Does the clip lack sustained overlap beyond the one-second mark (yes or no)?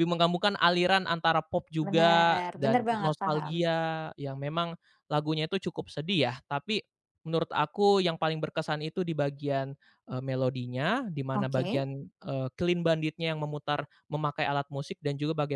no